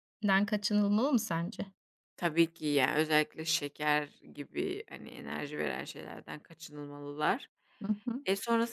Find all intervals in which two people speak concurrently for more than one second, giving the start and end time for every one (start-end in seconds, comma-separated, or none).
none